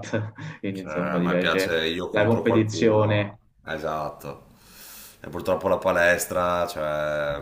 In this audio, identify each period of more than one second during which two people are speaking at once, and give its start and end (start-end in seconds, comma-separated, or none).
0.7-3.4